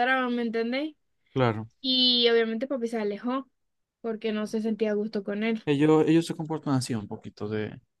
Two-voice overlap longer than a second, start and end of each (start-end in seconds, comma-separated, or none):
none